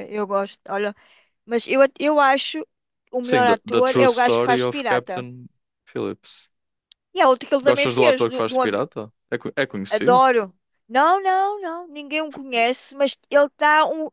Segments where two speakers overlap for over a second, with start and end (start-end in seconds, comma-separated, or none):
3.2-5.3, 7.6-8.8